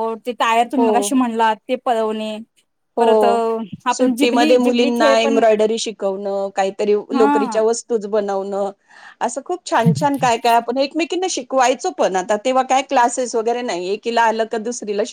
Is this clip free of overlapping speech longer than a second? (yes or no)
no